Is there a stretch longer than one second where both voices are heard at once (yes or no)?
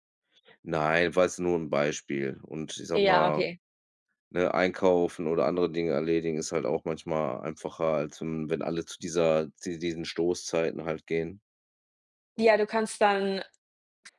no